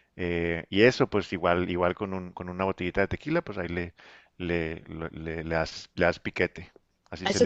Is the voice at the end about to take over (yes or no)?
yes